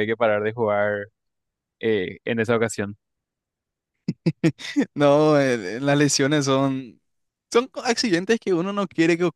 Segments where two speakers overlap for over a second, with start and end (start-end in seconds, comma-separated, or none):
none